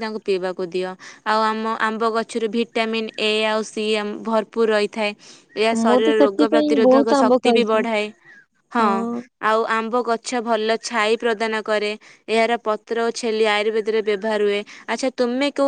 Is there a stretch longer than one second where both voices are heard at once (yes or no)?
yes